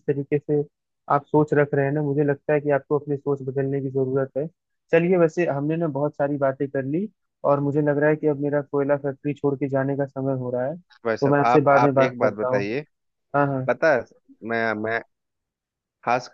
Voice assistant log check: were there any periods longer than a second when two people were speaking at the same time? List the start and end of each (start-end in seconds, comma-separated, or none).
11.2-12.7